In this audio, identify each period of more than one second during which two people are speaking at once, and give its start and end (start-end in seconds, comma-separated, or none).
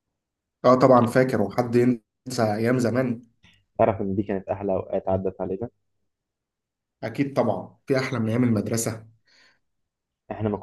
none